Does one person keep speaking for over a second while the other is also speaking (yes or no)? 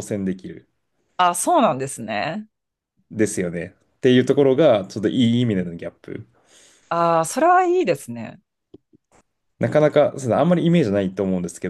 no